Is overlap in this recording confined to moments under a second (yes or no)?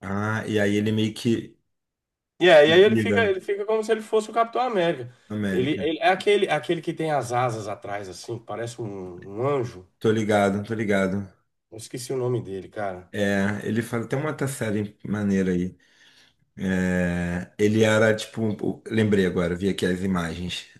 yes